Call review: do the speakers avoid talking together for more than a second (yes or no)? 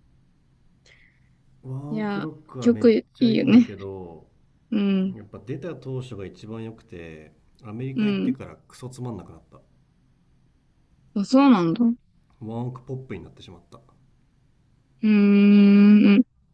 no